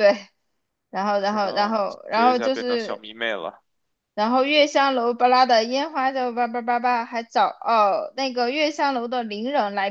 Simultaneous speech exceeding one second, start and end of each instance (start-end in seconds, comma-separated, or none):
1.2-3.0